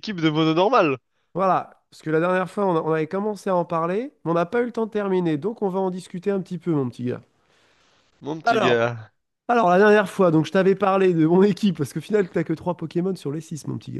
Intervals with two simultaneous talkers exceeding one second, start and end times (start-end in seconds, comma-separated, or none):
none